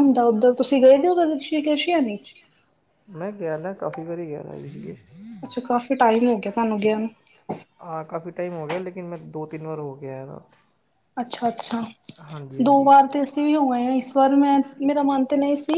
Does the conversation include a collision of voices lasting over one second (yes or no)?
no